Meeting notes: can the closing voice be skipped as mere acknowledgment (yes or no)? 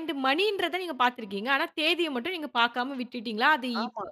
yes